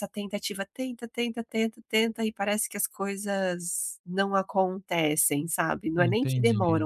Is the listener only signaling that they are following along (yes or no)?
yes